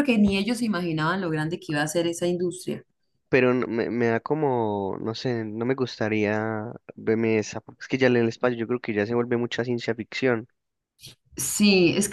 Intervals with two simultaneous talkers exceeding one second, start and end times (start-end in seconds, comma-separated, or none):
none